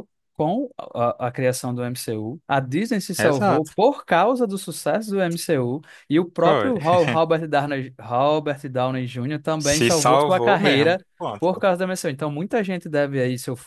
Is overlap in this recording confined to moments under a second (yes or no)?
no